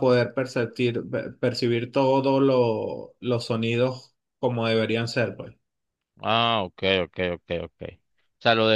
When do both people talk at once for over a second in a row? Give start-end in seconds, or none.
none